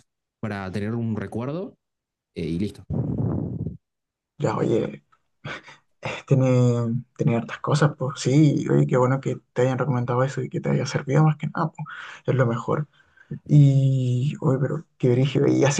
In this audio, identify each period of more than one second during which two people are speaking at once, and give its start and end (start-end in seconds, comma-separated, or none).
none